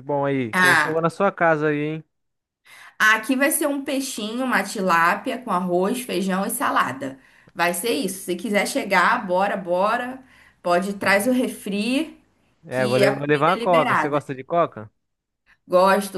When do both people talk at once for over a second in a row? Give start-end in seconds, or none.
12.7-14.2